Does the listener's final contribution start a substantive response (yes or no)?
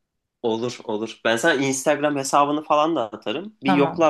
no